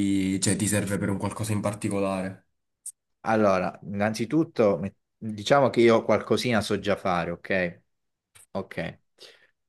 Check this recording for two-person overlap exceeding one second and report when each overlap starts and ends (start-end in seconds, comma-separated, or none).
none